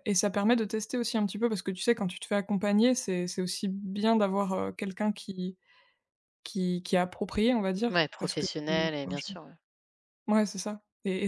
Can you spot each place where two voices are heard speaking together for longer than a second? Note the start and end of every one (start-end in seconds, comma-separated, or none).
7.9-9.2